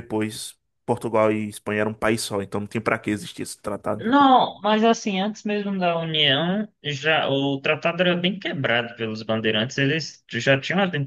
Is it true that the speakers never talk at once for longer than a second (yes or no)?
yes